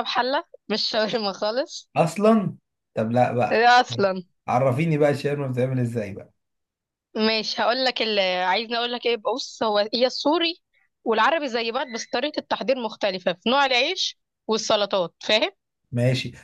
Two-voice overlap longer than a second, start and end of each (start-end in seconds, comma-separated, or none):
none